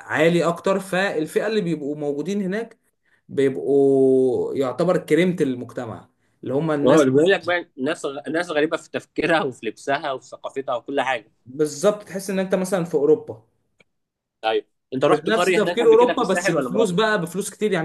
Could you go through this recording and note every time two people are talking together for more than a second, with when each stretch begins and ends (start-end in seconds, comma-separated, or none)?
14.9-16.9